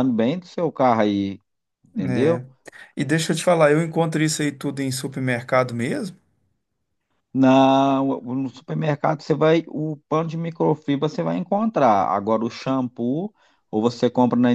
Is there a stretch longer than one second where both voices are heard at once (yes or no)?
no